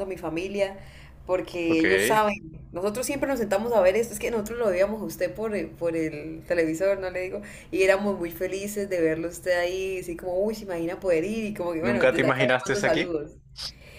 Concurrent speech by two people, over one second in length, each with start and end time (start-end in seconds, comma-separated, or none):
11.8-13.2